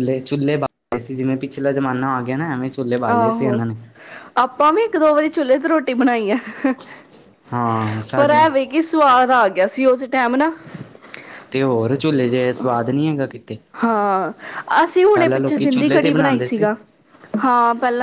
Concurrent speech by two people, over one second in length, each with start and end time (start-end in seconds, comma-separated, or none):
15.1-16.6